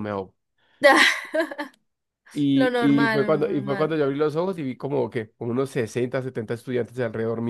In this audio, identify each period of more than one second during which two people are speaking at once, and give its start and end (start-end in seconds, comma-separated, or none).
2.5-4.0